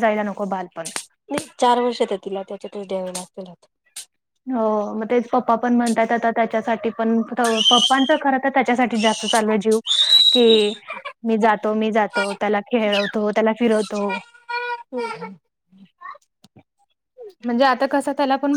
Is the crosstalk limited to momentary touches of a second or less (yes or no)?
yes